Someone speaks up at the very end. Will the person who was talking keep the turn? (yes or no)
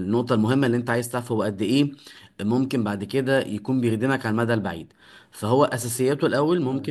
yes